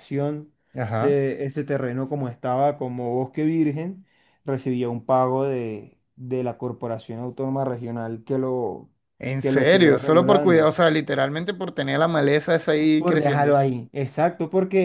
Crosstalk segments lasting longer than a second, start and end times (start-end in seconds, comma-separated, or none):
9.4-10.7